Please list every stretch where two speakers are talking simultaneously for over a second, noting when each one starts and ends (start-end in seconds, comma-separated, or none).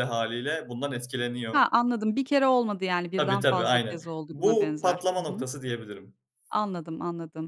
3.1-5.5